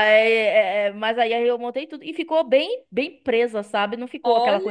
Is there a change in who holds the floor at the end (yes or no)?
no